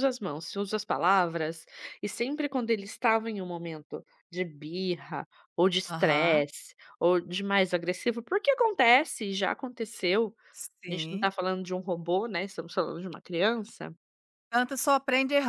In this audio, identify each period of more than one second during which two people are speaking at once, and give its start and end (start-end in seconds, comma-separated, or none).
none